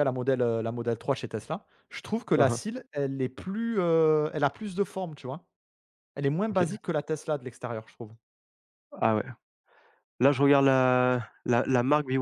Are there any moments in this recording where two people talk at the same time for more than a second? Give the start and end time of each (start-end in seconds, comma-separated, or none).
none